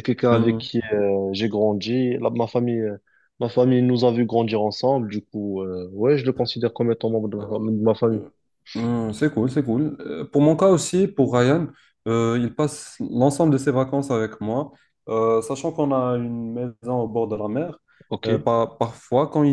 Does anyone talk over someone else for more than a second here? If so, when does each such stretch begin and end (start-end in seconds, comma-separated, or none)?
none